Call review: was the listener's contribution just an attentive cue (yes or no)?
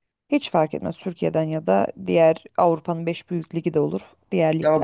no